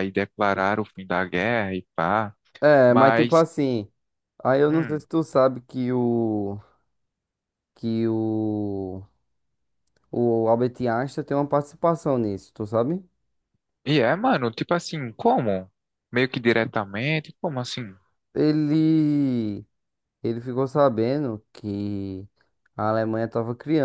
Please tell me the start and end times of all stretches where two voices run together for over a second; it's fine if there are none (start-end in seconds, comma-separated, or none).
none